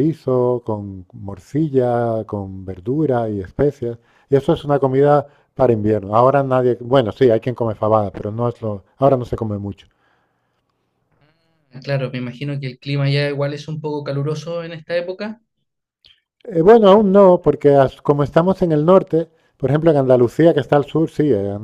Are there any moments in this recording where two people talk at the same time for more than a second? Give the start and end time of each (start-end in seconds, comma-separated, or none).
none